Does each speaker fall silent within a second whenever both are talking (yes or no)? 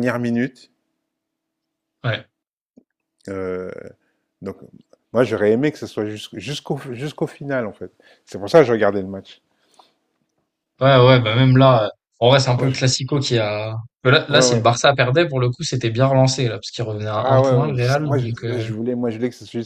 no